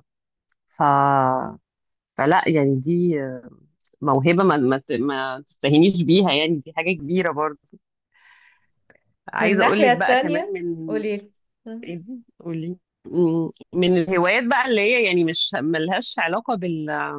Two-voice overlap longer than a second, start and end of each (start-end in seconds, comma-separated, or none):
9.4-11.0